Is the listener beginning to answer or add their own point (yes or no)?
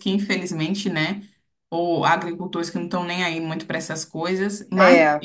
no